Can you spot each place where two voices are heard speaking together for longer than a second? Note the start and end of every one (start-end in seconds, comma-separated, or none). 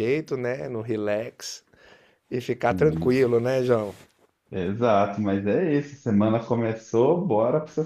none